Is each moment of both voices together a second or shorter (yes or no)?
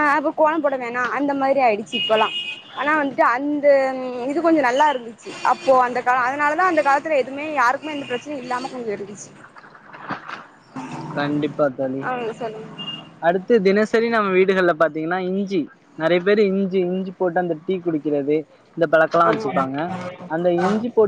yes